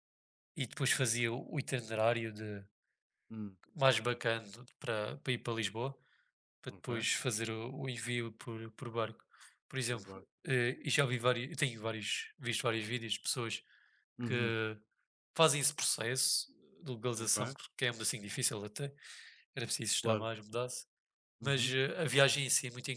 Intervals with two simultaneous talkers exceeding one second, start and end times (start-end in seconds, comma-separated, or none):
none